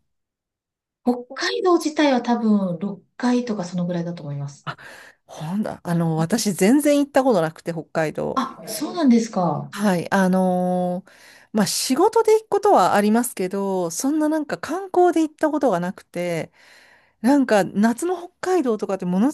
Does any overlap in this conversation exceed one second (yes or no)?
no